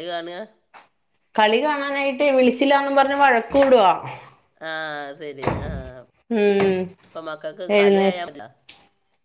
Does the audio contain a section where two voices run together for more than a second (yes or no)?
no